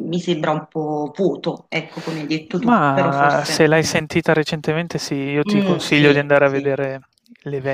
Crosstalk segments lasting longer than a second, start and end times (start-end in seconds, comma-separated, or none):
2.6-3.9, 5.4-6.7